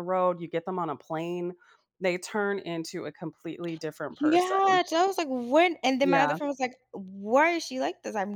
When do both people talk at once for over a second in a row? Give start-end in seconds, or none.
none